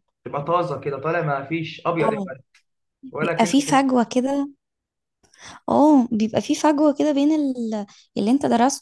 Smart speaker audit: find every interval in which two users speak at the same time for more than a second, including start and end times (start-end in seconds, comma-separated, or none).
none